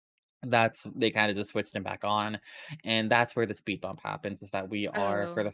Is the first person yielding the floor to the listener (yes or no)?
no